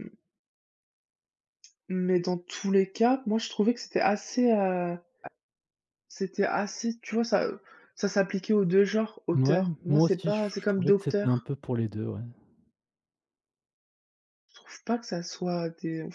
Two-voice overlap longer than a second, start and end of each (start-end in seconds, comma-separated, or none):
9.3-11.5